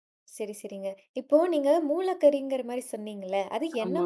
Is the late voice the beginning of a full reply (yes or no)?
no